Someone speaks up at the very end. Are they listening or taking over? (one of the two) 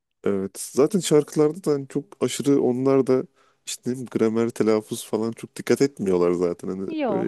listening